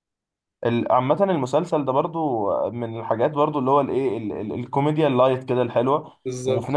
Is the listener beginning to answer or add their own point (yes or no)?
no